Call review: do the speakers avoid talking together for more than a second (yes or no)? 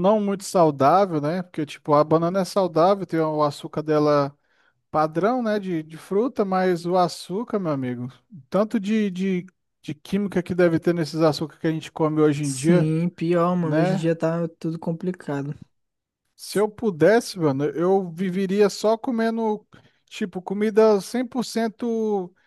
yes